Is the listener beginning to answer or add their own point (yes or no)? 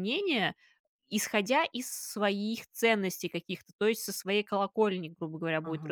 no